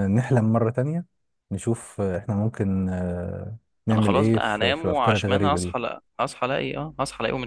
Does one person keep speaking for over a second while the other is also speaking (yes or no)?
yes